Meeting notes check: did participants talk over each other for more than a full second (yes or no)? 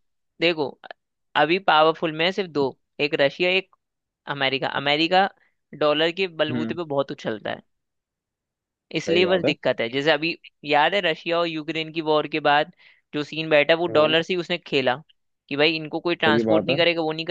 no